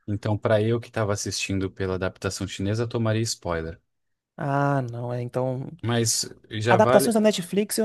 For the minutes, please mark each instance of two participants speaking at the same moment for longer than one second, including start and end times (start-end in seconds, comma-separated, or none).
none